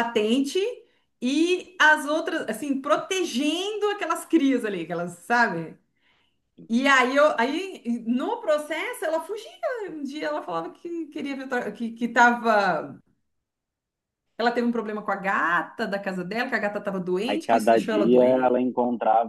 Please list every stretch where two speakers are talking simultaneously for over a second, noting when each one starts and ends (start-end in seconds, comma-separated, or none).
17.3-18.6